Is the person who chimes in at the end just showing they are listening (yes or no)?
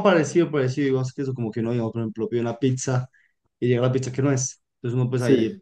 yes